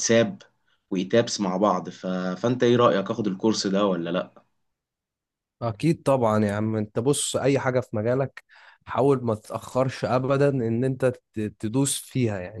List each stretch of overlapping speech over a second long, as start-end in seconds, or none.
none